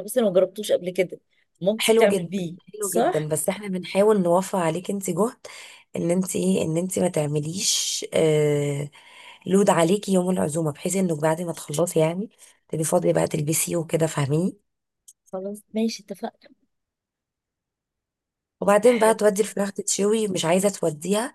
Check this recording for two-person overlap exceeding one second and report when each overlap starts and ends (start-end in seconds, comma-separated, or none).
1.8-3.3